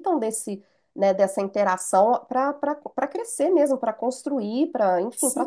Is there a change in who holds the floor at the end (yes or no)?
no